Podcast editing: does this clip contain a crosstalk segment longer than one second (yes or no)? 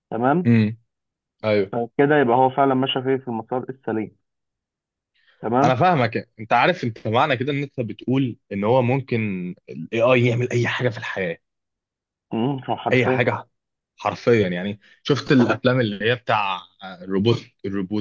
no